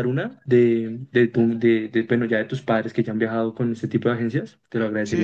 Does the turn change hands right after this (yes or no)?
yes